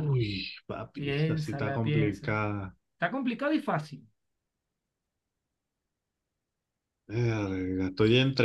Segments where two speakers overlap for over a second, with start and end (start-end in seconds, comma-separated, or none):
1.0-2.3